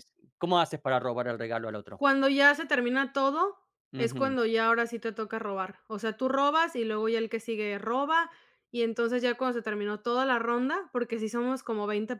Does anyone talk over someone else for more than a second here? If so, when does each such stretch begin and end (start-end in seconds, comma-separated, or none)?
none